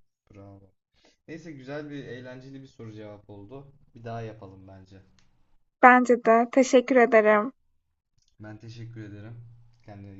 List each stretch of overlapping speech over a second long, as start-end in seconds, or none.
none